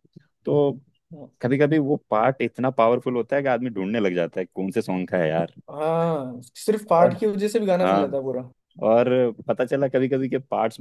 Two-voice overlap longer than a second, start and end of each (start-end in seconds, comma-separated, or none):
none